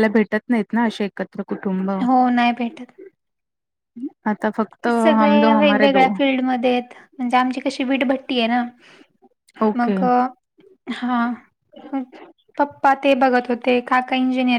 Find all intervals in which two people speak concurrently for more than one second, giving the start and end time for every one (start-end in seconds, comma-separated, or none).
none